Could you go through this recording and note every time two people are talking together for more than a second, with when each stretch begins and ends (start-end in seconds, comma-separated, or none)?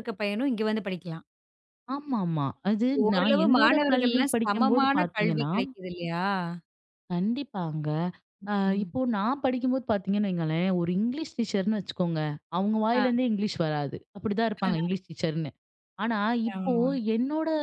3.1-5.5